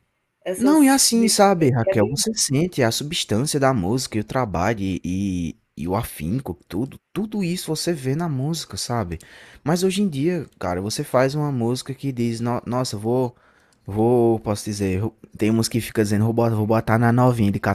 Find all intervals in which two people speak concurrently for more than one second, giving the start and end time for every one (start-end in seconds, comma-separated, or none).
0.6-2.2